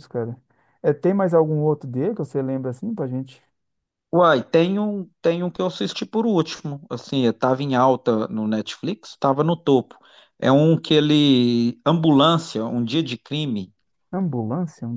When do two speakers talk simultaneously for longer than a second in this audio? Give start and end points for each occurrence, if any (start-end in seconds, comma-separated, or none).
none